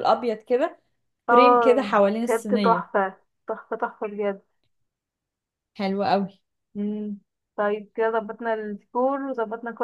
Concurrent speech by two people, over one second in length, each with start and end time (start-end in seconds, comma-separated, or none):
1.3-2.9